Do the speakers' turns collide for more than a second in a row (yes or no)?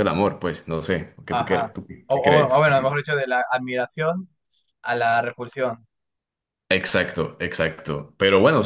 yes